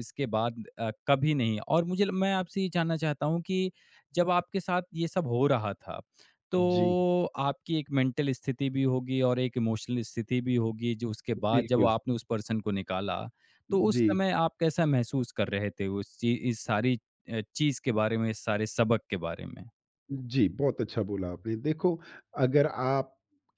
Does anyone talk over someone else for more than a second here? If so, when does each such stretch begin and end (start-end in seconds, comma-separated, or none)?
none